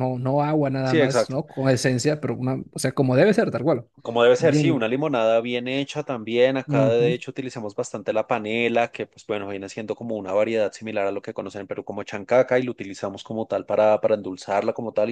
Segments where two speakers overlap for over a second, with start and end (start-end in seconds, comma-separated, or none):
none